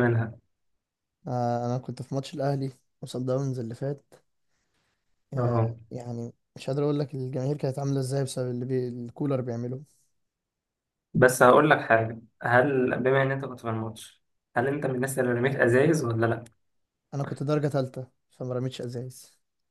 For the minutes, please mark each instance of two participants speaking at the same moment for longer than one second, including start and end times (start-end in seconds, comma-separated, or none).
none